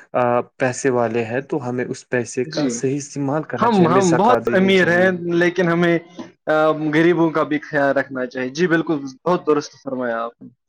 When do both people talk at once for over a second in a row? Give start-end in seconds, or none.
3.6-5.1